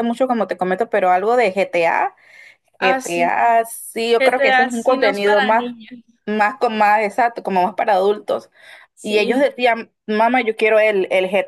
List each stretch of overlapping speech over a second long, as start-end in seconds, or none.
4.2-5.7